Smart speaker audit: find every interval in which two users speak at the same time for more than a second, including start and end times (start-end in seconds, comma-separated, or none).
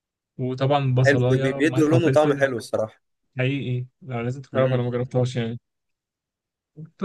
1.1-2.5